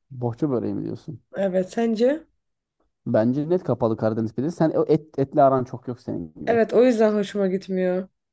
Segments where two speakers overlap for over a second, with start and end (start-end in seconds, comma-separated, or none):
none